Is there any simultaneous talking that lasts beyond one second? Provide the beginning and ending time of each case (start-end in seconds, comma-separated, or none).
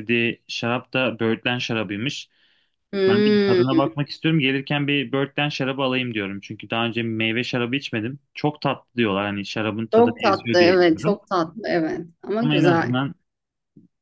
9.9-11.2